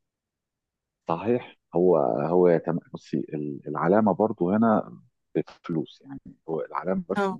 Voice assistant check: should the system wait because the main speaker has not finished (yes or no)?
yes